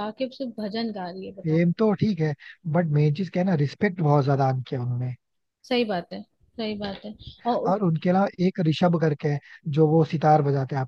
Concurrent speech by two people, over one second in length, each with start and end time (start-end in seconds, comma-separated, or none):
none